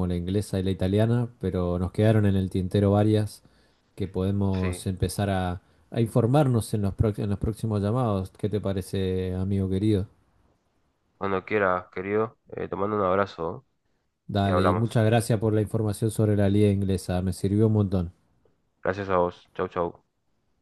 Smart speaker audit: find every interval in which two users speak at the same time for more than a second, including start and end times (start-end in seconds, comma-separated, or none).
none